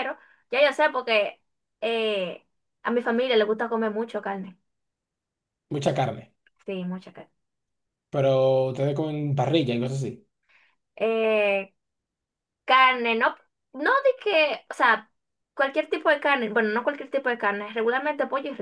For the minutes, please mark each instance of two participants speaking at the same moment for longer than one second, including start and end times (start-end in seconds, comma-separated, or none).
none